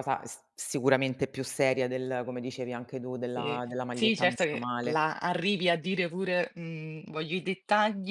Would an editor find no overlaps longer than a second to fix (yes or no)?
no